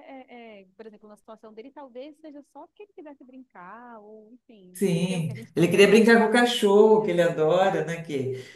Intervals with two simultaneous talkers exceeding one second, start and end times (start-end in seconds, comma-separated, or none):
4.7-7.3